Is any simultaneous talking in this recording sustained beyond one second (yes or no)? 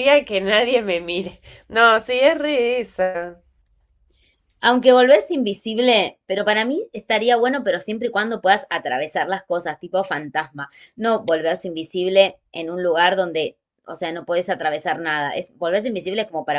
no